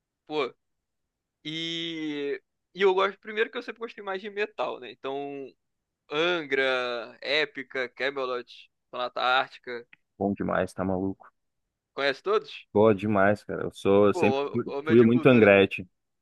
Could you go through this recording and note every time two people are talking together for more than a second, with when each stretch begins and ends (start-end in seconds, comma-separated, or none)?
14.1-15.5